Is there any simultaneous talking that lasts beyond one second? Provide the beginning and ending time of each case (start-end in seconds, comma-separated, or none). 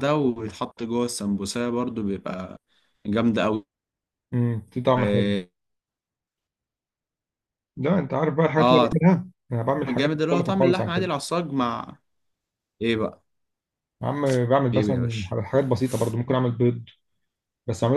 9.9-11.1